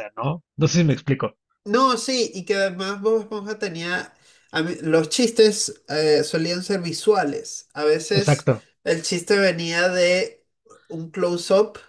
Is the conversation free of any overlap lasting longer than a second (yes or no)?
yes